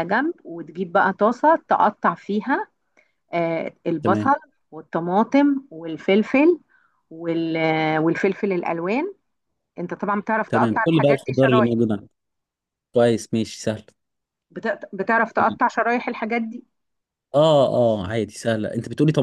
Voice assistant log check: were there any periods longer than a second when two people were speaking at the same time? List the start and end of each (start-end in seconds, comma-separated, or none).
10.5-11.8